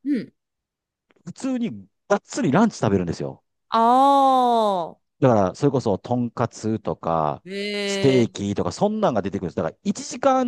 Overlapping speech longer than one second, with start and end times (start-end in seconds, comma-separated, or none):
none